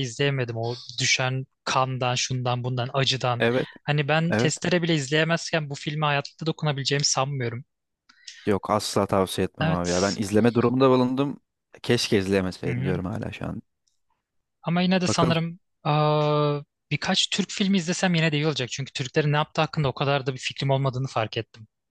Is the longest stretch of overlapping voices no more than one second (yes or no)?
yes